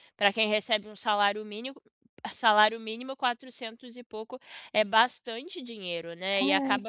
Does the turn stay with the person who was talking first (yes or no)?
yes